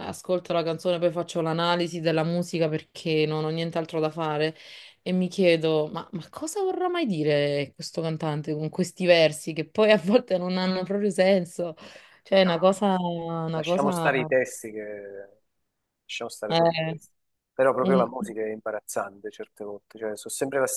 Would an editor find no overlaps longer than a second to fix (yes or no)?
yes